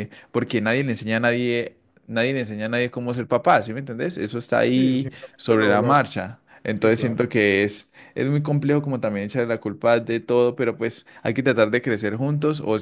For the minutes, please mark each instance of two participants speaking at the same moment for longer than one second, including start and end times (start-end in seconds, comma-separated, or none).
4.7-6.1